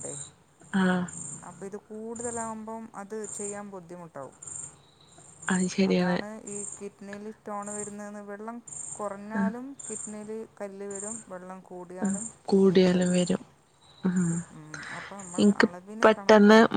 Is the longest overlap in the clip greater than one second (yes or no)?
no